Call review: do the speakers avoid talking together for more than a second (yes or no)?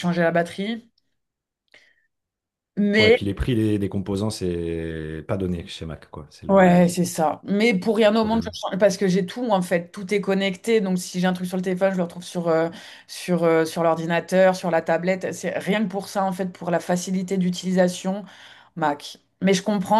yes